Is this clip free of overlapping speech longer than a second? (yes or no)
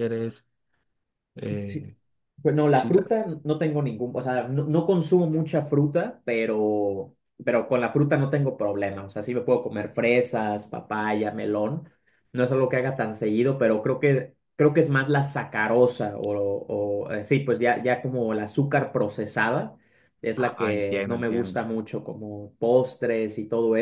no